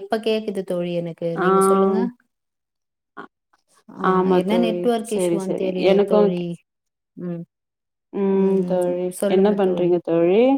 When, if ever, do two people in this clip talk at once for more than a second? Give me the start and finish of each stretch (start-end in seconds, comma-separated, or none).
4.1-6.4